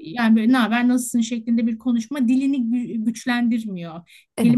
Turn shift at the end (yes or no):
no